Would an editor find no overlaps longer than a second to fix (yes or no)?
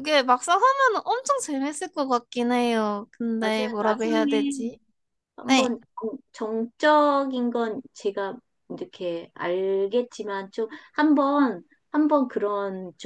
no